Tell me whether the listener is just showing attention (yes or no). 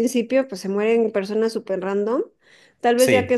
yes